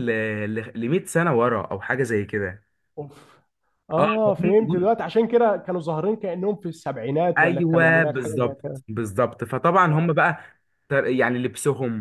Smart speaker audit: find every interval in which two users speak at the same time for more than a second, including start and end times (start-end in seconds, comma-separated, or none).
7.4-8.8